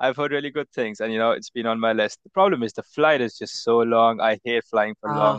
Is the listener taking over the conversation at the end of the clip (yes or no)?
no